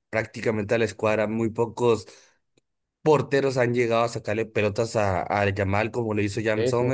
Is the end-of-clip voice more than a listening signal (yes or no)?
no